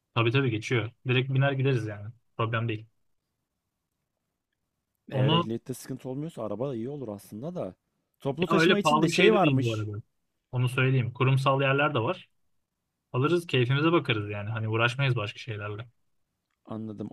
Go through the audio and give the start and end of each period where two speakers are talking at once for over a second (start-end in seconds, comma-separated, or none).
8.5-9.9